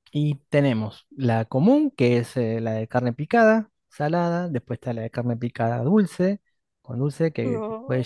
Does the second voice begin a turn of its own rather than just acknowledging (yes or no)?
no